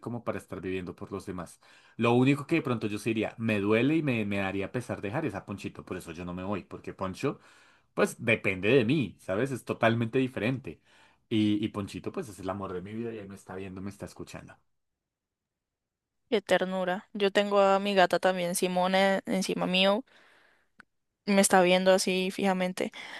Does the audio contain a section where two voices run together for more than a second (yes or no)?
no